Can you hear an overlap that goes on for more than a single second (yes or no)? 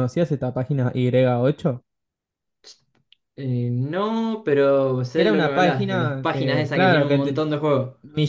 yes